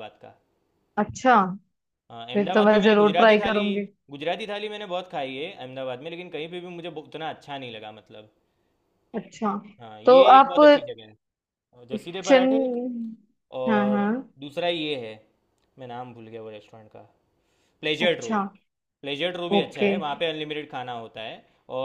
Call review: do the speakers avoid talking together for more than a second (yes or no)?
no